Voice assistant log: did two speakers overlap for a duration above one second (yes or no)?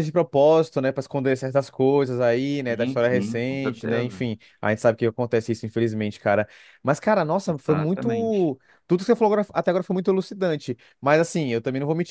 yes